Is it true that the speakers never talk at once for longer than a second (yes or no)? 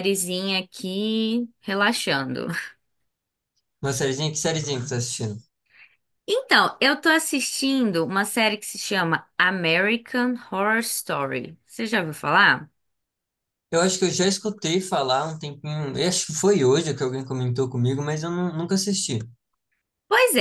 yes